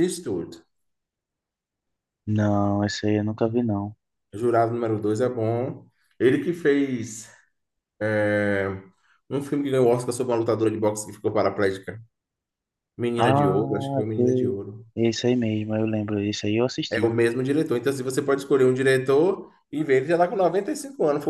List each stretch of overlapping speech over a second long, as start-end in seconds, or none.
13.2-14.6